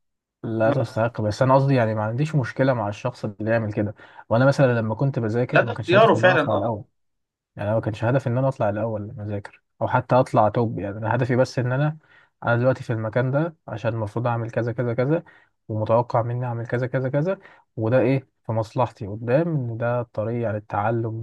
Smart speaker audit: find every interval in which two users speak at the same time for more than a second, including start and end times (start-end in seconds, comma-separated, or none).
5.5-6.8